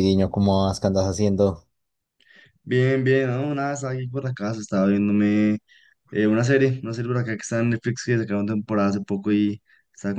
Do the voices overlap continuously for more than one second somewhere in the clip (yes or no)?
no